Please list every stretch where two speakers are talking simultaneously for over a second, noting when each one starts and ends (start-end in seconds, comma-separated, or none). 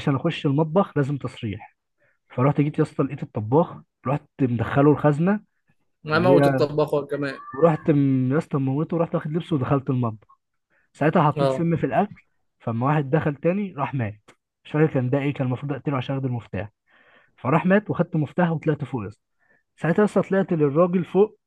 none